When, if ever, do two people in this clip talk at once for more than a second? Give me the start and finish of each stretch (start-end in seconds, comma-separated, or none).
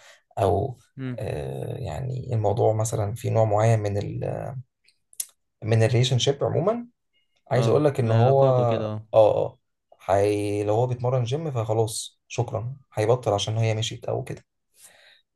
7.5-9.1